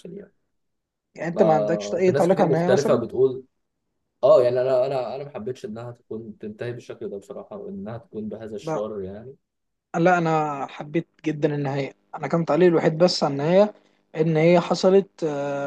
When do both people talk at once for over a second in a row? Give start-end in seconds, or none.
1.3-3.0